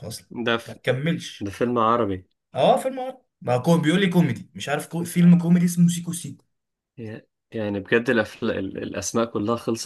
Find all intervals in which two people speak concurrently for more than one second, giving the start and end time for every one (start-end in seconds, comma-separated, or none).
none